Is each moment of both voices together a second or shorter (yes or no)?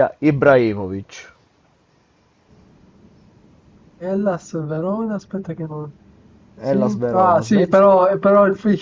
no